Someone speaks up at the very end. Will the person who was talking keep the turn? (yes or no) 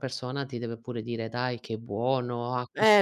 no